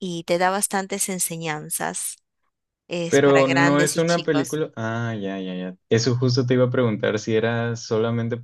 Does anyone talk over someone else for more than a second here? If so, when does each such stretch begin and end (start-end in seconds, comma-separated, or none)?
3.1-4.6